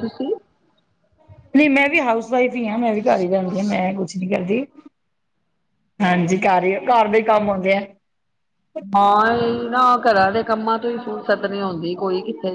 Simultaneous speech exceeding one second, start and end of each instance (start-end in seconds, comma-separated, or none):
none